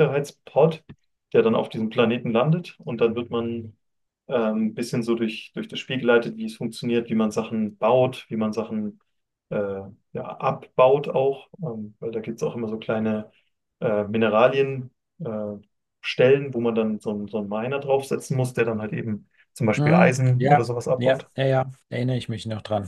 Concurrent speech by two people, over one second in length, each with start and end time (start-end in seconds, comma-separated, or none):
19.8-21.3